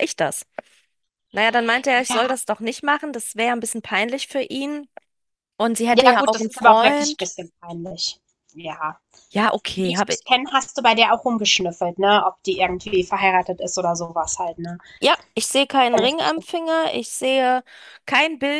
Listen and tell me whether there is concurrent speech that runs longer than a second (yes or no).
yes